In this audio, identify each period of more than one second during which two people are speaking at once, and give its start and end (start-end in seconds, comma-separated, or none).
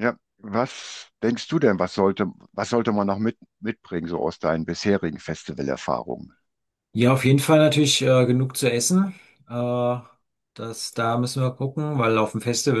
none